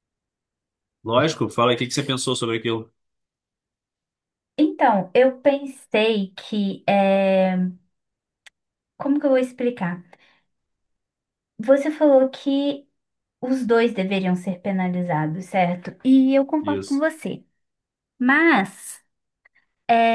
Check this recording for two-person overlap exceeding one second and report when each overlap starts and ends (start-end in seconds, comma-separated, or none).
none